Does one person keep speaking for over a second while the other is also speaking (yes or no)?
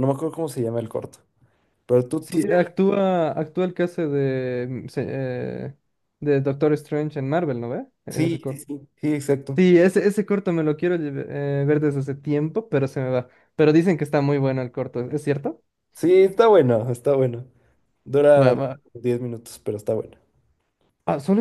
no